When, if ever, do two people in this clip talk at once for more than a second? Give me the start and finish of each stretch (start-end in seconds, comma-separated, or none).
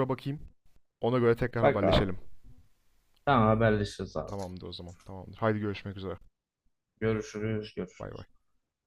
none